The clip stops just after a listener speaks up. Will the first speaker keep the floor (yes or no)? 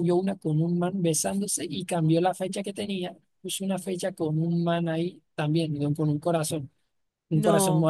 yes